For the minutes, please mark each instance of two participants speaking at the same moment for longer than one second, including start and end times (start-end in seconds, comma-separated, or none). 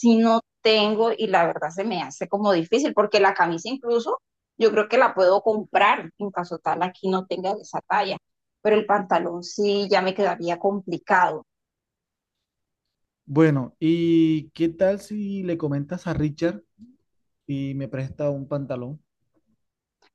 none